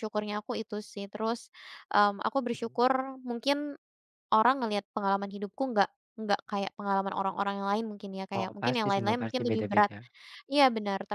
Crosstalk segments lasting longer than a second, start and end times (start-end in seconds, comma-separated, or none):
8.4-9.9